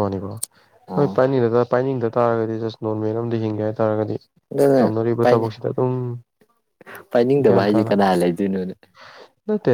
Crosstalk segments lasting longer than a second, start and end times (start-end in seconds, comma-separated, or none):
none